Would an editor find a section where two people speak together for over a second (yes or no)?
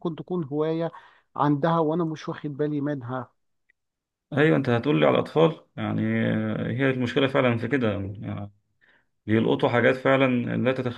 no